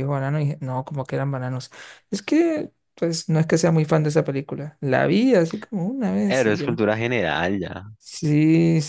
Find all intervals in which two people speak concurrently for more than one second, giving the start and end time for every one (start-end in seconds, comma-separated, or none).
none